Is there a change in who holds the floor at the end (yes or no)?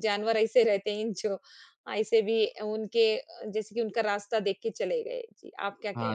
yes